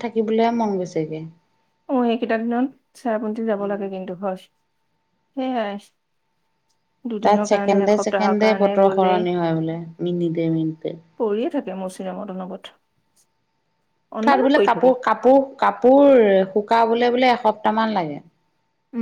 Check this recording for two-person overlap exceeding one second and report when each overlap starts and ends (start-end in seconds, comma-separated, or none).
7.2-9.1